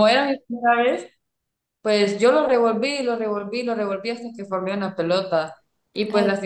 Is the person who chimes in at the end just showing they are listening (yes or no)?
yes